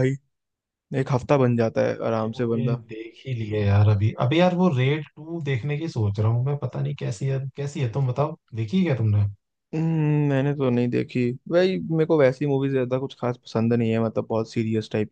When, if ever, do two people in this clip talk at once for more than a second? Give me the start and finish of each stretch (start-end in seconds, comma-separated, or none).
none